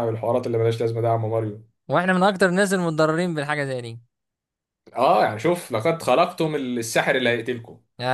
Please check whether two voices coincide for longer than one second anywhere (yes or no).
no